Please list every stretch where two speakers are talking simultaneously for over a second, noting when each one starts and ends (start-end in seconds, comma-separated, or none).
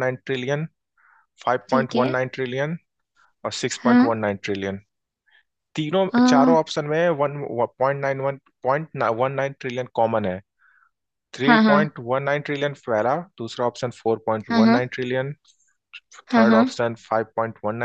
none